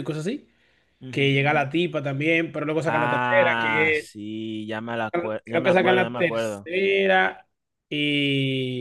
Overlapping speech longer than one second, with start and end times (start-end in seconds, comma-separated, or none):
2.9-4.1, 5.4-6.7